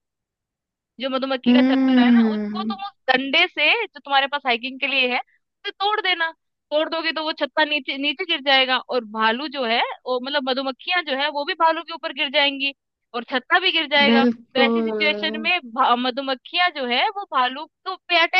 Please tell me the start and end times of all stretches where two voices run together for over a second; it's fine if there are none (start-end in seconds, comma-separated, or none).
1.5-2.8, 14.1-15.5